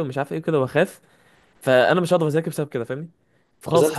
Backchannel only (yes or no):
yes